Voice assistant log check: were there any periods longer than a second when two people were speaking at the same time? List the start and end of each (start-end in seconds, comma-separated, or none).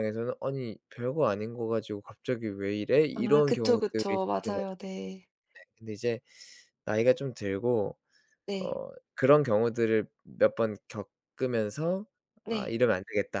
3.1-4.8